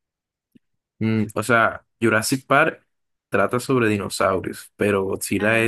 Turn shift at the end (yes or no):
no